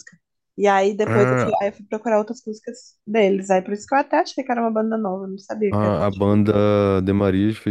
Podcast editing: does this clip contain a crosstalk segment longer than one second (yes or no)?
no